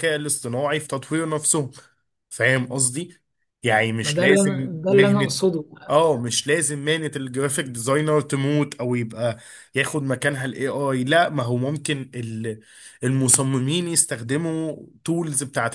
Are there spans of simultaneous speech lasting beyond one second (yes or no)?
yes